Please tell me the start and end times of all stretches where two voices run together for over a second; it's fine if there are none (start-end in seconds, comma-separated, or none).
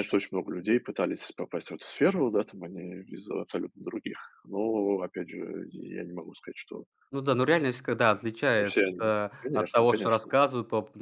8.5-10.4